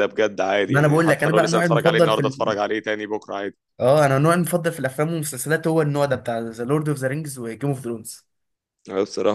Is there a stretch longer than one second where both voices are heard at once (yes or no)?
yes